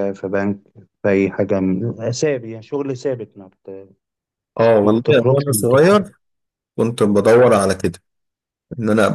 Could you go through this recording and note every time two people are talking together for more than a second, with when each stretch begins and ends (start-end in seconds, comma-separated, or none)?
4.8-6.1